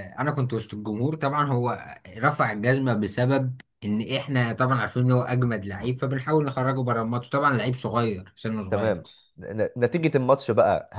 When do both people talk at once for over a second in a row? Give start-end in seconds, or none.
none